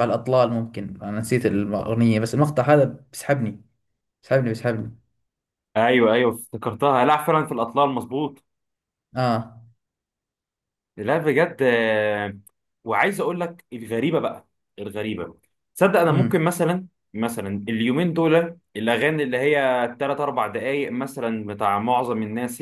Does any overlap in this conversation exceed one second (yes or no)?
no